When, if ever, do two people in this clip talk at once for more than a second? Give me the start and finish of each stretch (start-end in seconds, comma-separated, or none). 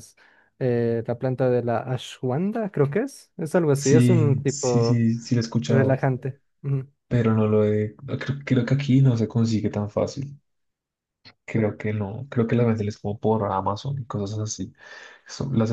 3.7-5.0